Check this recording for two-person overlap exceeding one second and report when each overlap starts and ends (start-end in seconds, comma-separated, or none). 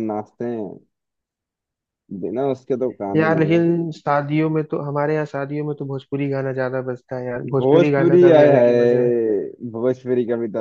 7.6-9.1